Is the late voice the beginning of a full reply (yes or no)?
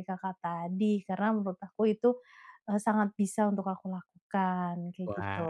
yes